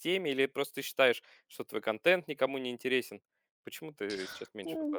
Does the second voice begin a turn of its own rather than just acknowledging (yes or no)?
yes